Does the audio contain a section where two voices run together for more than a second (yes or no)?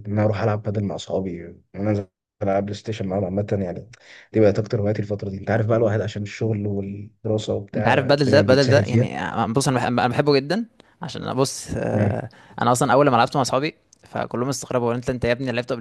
yes